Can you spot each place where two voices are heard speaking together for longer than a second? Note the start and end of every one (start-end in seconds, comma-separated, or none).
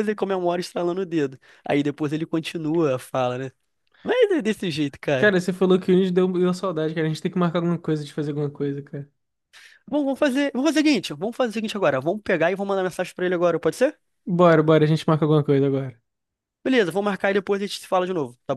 none